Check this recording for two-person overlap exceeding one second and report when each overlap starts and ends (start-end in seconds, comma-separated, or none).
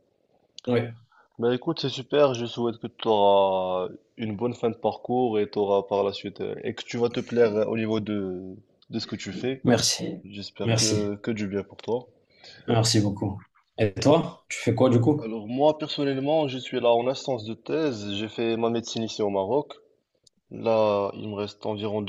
none